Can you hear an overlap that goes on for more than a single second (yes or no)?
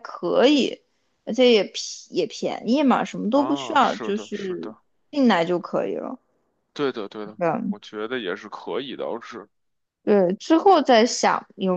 yes